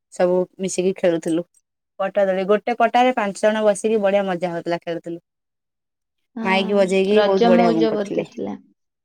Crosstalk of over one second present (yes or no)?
yes